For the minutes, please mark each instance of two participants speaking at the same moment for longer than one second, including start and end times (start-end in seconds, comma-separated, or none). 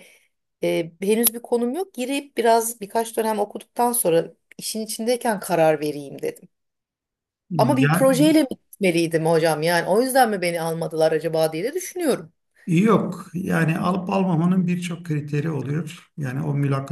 none